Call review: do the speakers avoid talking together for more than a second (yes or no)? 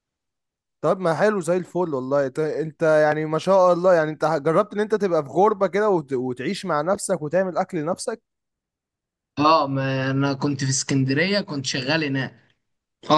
yes